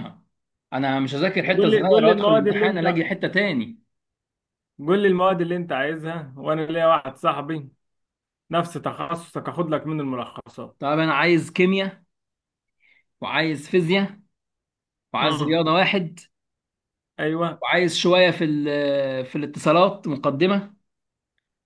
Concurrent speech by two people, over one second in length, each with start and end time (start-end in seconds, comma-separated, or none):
1.6-3.0